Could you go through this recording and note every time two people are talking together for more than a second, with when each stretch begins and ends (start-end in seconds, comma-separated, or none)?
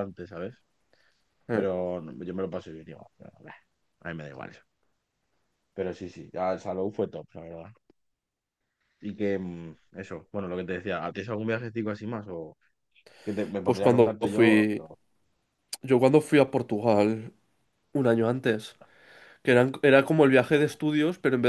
13.6-14.9